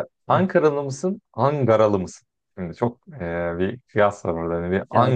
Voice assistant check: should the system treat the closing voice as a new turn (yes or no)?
yes